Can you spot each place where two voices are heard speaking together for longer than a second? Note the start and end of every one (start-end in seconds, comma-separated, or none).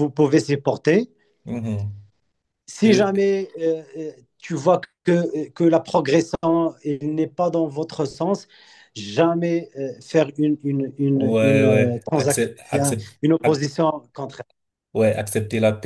11.1-12.5